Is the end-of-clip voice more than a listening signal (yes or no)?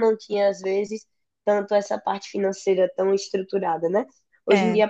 no